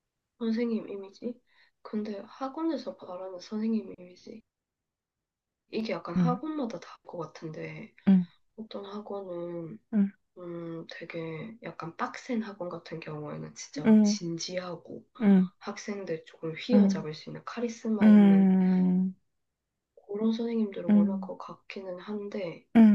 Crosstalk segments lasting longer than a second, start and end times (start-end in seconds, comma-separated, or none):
none